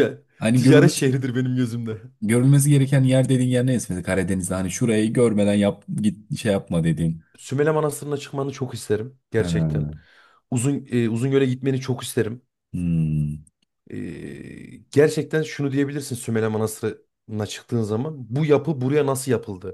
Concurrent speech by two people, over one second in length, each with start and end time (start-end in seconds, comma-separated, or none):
none